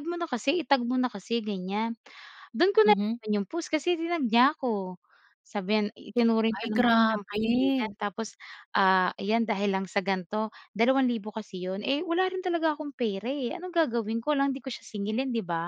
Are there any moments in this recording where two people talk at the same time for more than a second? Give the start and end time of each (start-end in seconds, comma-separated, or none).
6.5-7.9